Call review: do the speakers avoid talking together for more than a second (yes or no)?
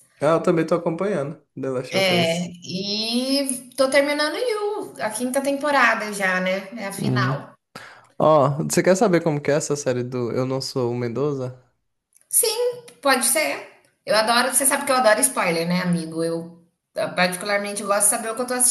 yes